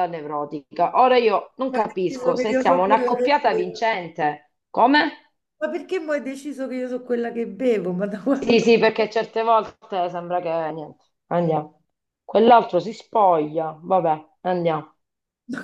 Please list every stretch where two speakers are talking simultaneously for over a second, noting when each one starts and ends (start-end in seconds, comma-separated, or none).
1.7-3.8